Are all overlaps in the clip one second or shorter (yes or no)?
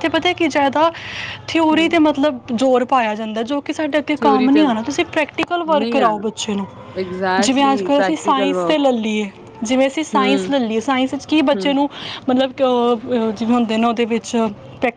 no